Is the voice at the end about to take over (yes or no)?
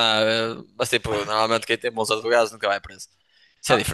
no